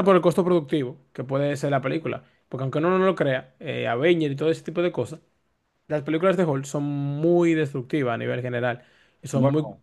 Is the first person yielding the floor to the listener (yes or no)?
no